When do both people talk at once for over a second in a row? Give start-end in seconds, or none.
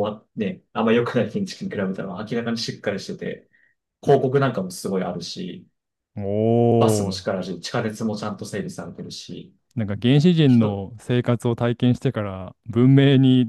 none